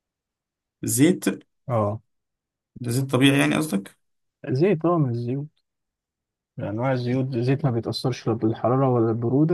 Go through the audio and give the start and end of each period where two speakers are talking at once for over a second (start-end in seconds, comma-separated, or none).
none